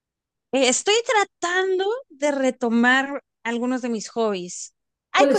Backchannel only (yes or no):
yes